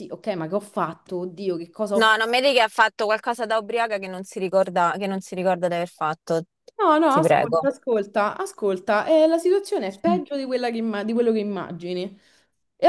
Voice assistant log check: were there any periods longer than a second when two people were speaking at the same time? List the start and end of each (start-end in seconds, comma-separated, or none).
none